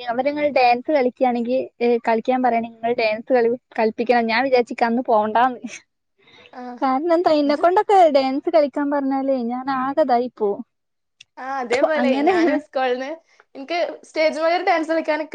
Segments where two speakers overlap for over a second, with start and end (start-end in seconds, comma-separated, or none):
none